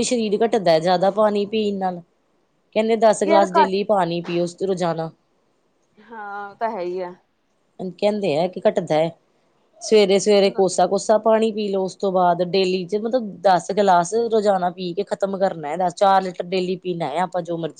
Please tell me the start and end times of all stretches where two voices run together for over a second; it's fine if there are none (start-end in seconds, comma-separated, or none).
none